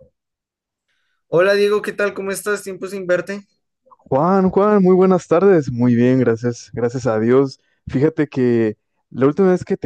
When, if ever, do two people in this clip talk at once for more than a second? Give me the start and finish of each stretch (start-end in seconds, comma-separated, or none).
none